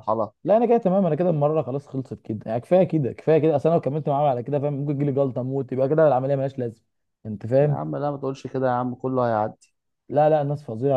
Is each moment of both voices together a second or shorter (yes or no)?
yes